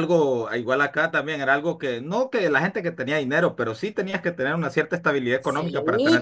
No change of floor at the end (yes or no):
no